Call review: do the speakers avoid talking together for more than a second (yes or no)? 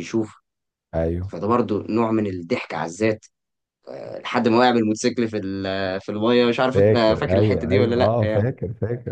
no